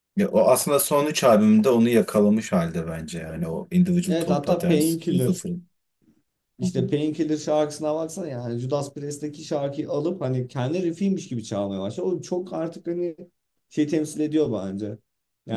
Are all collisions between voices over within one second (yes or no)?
no